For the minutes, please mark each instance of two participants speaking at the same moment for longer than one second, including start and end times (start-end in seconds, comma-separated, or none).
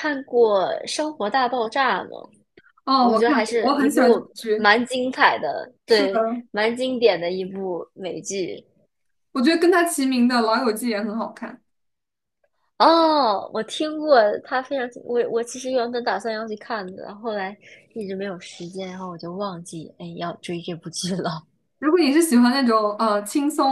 3.0-4.7